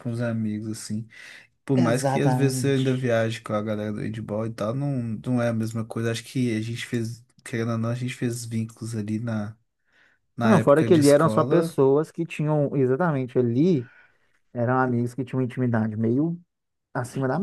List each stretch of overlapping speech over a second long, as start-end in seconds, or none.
1.7-3.1, 10.4-11.7